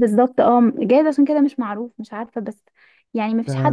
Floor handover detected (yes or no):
no